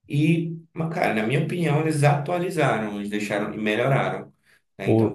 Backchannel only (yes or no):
yes